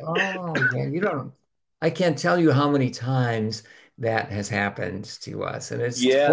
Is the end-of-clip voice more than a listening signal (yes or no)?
yes